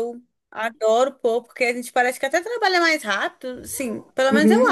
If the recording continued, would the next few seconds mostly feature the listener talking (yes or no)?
yes